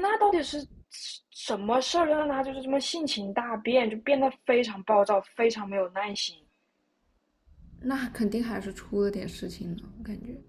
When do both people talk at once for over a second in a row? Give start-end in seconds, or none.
none